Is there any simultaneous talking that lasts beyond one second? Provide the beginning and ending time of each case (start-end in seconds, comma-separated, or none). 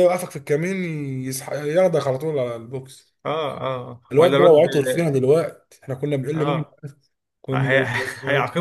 none